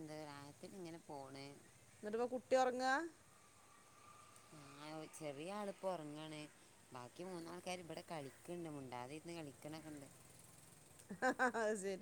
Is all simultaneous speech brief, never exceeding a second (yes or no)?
yes